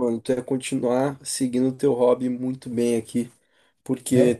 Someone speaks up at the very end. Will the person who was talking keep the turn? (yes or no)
yes